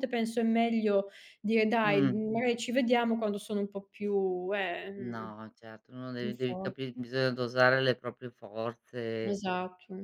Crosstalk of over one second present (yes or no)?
no